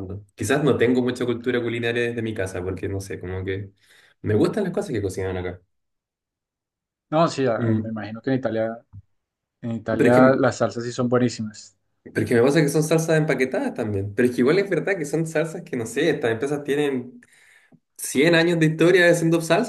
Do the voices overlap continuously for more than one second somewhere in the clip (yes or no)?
no